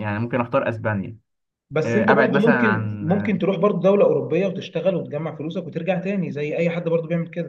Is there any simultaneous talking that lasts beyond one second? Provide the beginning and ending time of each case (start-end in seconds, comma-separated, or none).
1.9-3.4